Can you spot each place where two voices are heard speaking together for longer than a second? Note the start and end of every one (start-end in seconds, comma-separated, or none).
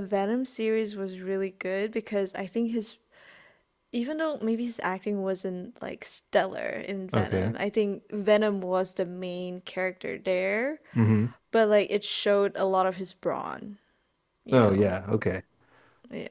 none